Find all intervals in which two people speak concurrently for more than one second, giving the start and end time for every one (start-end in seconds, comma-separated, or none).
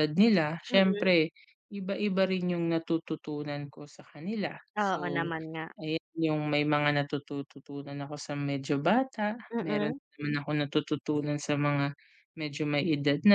none